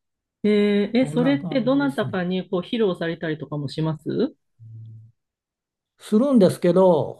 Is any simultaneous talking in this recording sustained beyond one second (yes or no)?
yes